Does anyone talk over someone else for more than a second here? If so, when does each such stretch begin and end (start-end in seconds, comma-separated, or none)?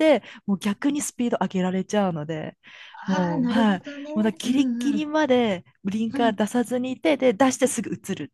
3.1-5.1